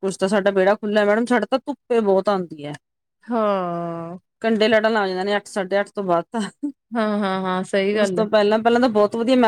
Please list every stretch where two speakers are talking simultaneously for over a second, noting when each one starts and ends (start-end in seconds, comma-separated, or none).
none